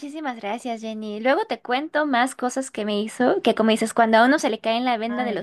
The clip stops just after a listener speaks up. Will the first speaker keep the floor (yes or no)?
yes